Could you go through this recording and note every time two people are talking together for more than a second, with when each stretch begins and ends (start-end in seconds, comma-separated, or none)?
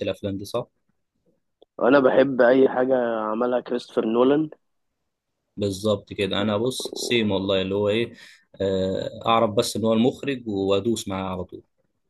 none